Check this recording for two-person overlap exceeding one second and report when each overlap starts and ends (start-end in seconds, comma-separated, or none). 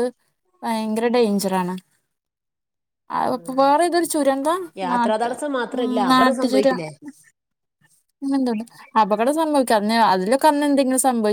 none